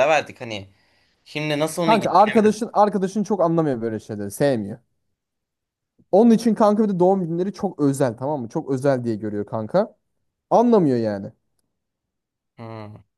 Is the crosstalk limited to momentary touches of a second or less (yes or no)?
yes